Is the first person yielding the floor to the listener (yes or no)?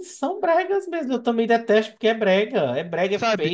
yes